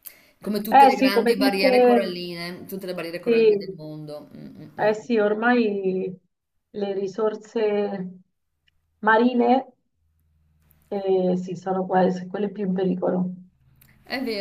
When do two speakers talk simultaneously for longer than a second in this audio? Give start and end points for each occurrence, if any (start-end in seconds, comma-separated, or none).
0.7-2.0